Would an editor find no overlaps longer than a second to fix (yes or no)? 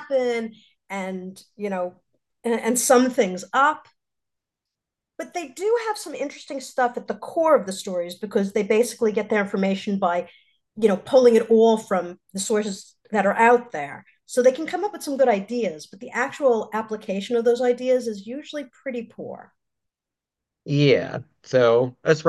yes